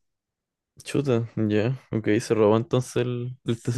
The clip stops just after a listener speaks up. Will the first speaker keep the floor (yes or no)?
no